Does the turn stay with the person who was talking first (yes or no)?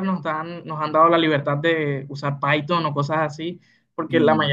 yes